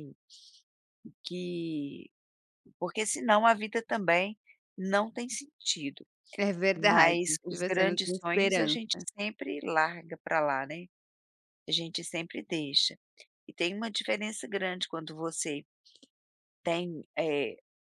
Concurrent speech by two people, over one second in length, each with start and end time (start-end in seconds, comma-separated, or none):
6.8-9.0